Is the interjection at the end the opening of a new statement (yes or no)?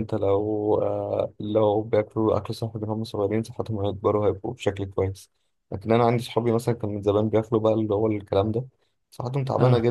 no